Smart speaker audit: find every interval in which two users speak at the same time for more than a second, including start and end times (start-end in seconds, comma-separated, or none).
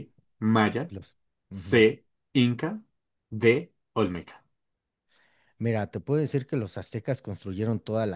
none